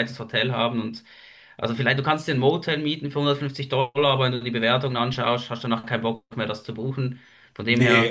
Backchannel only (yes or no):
no